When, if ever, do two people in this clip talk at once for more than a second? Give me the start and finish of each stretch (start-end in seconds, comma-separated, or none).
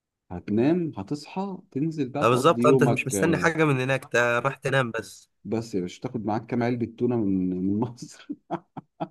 2.2-3.5